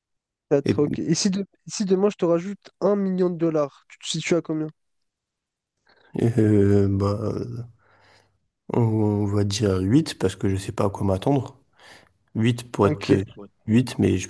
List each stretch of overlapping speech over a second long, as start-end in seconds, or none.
none